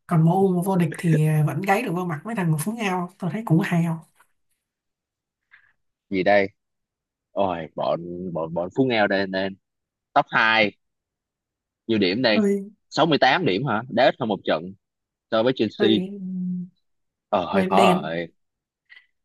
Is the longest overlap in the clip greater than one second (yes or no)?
no